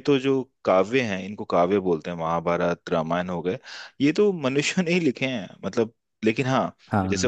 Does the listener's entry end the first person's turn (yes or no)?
no